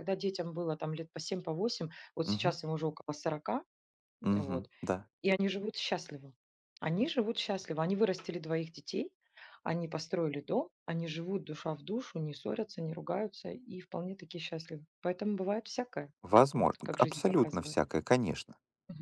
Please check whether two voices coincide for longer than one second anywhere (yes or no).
yes